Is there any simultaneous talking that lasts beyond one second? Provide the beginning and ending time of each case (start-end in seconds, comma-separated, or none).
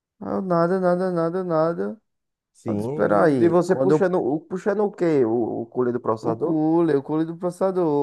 2.7-4.2